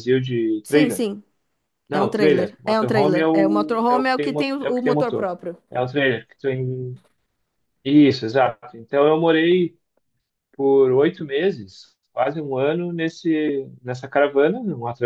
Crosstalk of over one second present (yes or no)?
yes